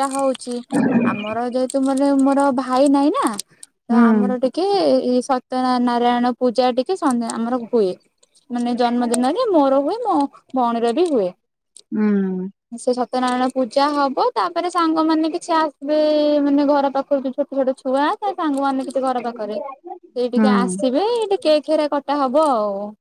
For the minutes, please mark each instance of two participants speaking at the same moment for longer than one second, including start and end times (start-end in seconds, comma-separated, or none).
19.4-20.9